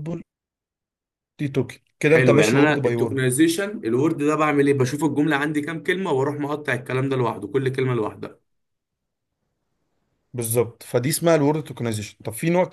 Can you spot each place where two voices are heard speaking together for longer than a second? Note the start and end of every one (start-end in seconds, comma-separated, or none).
2.0-3.3